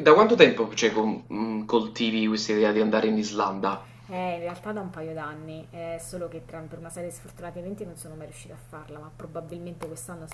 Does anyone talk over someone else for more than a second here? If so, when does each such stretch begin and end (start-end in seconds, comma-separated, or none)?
none